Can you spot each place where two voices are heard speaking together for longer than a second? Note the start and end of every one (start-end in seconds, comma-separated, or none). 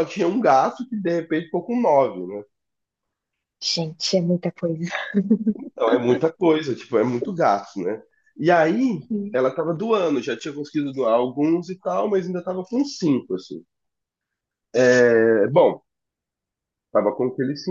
none